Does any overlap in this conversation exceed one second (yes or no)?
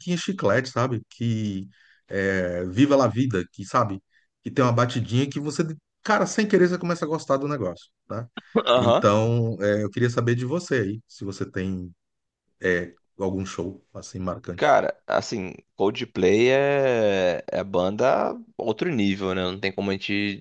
no